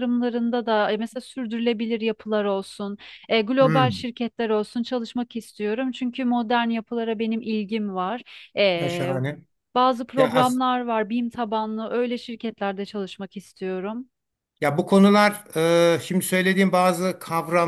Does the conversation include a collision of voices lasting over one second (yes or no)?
no